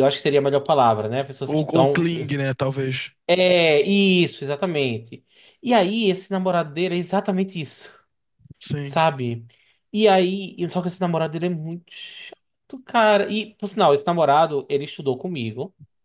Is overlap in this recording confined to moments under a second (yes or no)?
yes